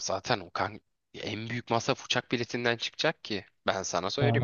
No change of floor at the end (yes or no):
no